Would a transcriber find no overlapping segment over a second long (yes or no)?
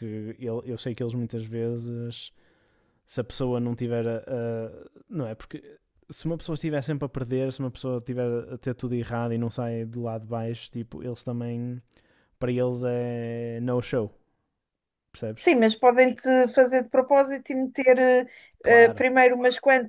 yes